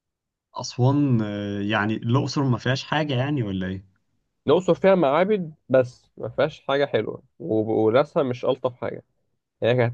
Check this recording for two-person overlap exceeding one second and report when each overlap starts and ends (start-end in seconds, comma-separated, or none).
none